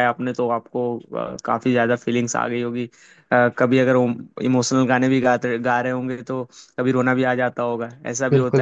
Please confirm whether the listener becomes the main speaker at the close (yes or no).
yes